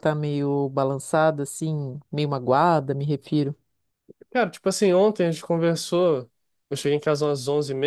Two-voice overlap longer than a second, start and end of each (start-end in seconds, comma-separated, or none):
none